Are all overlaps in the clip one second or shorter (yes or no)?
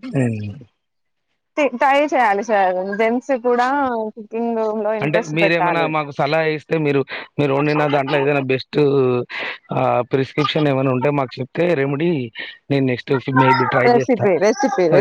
yes